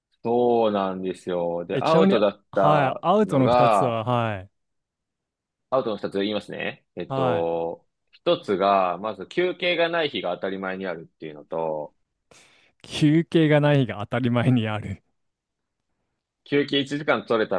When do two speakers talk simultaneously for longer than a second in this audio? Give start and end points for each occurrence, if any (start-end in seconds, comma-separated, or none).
1.7-4.0